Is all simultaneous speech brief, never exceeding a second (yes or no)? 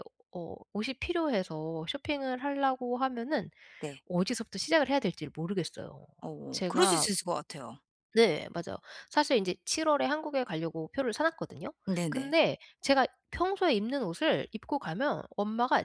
yes